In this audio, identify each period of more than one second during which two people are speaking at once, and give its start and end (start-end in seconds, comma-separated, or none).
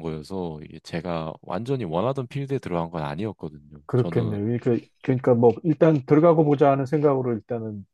none